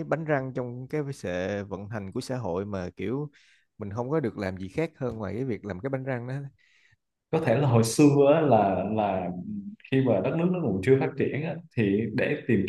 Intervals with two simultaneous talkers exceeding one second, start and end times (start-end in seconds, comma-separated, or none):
none